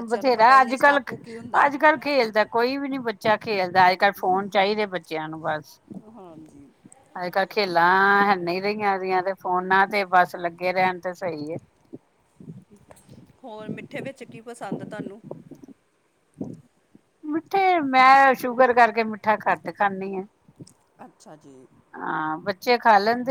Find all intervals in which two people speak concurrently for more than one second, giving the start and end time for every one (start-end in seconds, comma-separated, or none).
none